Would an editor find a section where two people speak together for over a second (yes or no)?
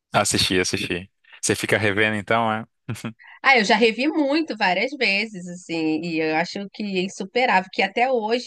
no